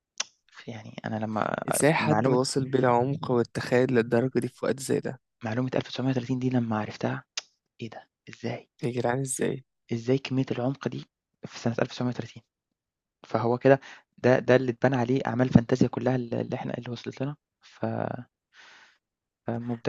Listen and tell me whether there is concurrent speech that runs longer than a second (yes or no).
no